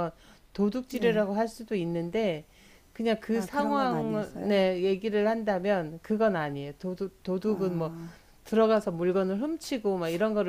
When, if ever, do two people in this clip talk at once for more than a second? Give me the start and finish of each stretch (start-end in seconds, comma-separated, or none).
3.3-4.6